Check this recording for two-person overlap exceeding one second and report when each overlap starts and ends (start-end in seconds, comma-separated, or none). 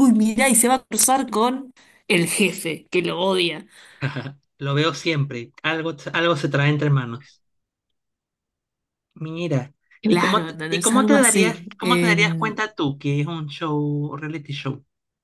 10.1-12.6